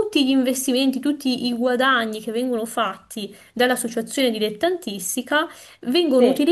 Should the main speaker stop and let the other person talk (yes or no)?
no